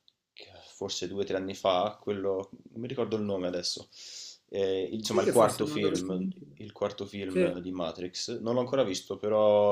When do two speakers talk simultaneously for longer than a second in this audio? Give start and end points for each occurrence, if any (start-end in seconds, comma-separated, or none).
5.1-6.6